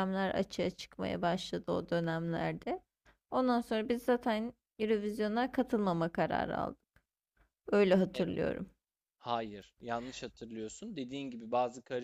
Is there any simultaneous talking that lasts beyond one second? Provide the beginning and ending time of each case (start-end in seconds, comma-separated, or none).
none